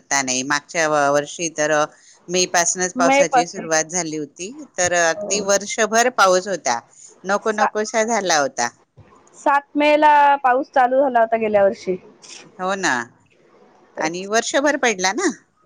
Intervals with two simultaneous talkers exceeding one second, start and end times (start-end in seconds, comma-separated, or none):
none